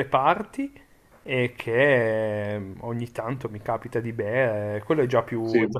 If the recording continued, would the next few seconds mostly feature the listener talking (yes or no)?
no